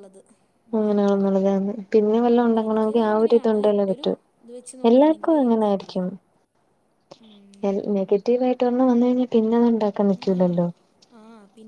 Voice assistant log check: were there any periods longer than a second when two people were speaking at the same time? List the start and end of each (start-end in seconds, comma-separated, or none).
2.1-4.1